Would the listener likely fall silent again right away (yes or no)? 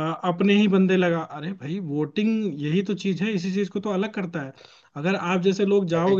yes